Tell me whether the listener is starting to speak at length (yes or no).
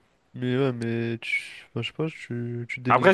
yes